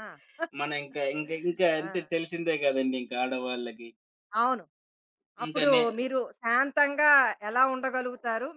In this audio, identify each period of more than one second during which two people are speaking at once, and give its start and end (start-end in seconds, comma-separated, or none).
none